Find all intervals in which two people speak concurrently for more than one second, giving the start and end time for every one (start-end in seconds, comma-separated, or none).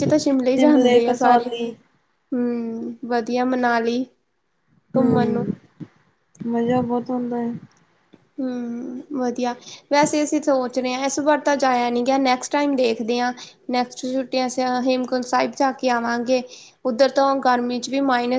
none